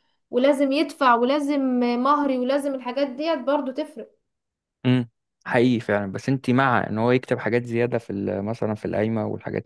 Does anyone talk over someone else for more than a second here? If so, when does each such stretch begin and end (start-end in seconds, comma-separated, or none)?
none